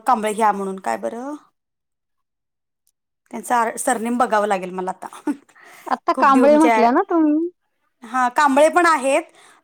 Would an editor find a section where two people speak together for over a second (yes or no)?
no